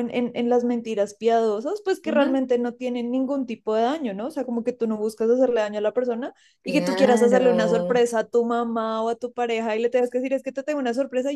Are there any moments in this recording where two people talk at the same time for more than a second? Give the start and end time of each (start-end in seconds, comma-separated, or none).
6.6-8.0